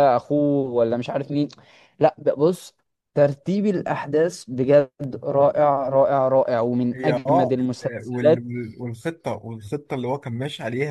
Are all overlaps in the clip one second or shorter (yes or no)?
no